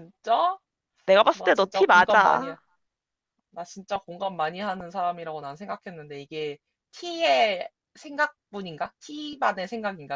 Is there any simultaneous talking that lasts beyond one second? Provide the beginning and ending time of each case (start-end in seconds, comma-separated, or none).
1.3-2.5